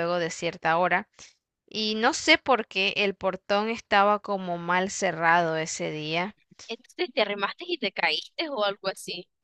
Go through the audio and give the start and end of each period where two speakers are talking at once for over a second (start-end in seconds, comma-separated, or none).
none